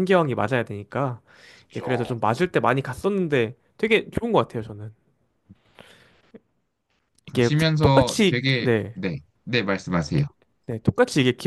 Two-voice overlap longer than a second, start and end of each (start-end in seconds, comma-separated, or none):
7.3-9.0